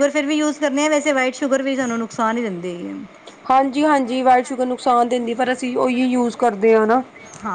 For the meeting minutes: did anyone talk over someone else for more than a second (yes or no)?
no